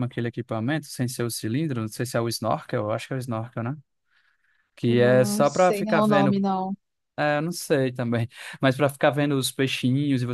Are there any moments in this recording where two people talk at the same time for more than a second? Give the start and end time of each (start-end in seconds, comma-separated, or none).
4.9-6.4